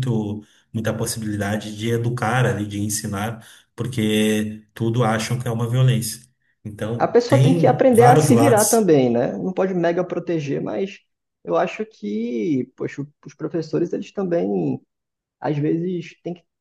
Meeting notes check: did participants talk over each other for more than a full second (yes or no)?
yes